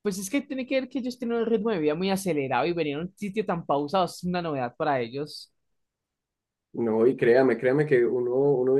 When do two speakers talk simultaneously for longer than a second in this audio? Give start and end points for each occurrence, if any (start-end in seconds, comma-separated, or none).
none